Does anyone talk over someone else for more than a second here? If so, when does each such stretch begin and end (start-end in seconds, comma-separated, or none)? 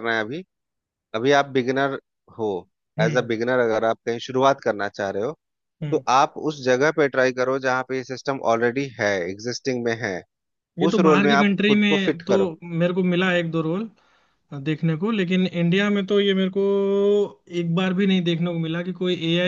10.9-12.3